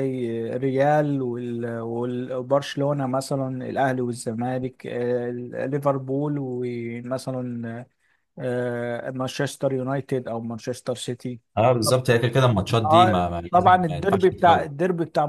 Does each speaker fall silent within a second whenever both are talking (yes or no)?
no